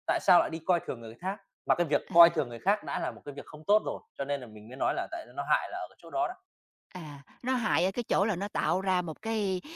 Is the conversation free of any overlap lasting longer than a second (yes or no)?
yes